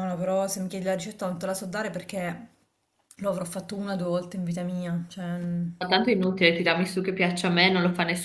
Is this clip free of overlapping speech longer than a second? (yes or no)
yes